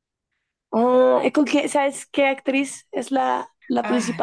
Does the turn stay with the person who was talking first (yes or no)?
no